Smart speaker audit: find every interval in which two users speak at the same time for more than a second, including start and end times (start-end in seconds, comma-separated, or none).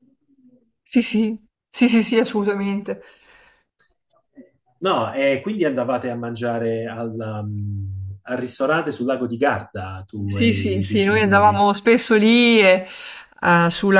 10.3-11.7